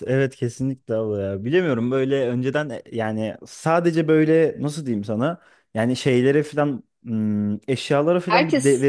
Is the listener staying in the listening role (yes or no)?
yes